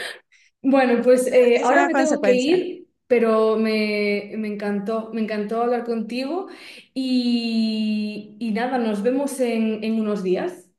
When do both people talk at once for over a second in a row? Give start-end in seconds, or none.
1.1-2.6